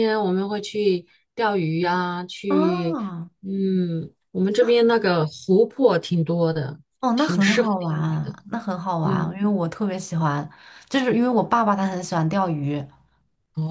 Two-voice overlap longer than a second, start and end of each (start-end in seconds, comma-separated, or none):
7.2-8.3